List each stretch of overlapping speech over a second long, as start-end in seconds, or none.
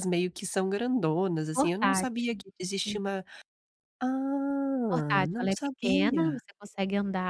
1.5-3.0, 4.9-6.4